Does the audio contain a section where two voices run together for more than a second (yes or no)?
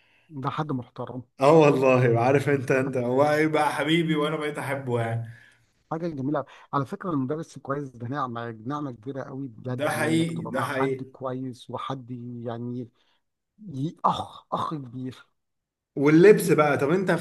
yes